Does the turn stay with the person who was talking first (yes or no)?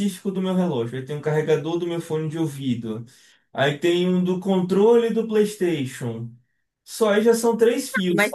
no